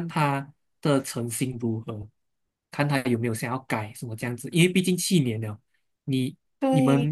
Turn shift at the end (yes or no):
no